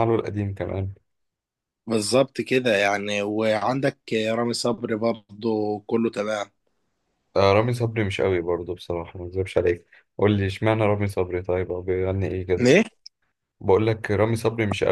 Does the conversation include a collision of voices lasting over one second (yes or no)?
no